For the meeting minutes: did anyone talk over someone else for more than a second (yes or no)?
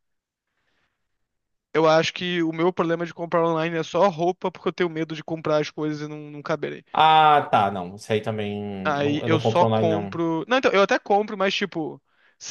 yes